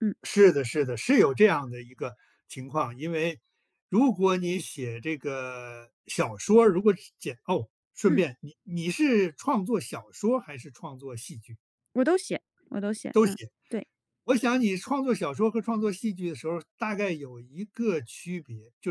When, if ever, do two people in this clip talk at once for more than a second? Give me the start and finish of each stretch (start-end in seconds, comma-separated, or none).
none